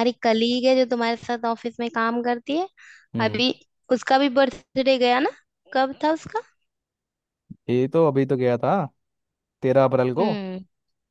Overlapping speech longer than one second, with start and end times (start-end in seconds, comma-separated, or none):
none